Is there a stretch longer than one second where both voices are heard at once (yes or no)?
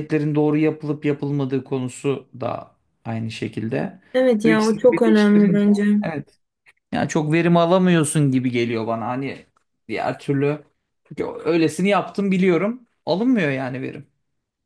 yes